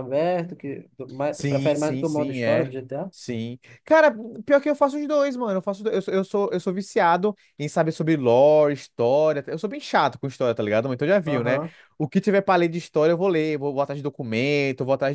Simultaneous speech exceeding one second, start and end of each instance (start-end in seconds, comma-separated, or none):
1.3-2.7